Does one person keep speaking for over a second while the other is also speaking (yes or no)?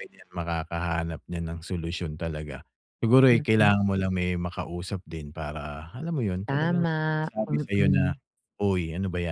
yes